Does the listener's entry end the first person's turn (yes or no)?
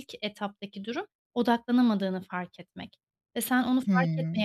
no